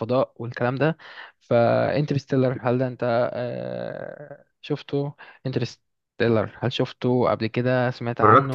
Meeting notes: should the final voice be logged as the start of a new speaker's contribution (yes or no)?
yes